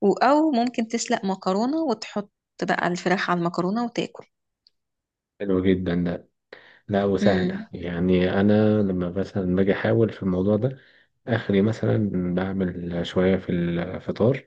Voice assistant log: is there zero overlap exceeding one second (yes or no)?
yes